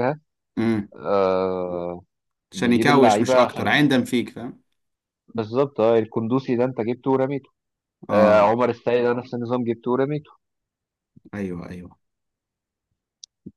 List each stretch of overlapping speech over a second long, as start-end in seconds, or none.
2.5-3.8